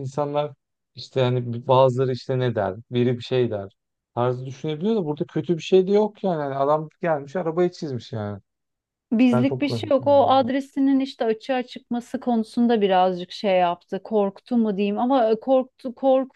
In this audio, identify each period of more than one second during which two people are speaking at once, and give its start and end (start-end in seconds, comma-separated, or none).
9.2-10.4